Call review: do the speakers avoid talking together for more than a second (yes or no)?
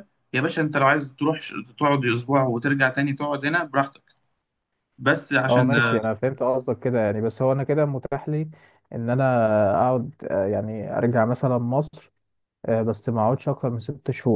yes